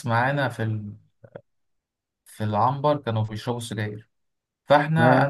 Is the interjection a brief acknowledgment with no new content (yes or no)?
yes